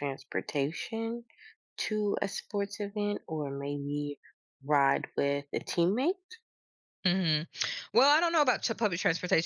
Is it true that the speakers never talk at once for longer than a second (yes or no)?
yes